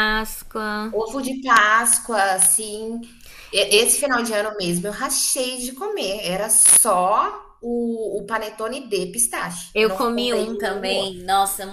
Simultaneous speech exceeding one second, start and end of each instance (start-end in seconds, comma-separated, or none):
9.7-11.1